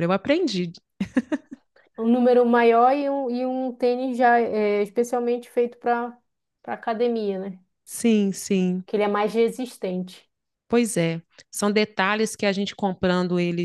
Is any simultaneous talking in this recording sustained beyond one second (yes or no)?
no